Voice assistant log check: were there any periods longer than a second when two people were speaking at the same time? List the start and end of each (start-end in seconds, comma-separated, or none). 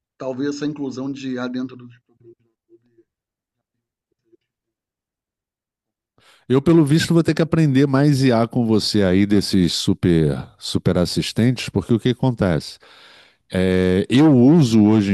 none